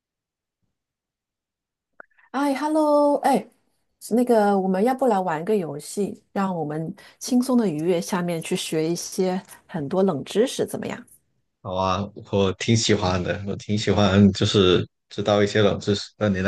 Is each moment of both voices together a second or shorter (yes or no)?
yes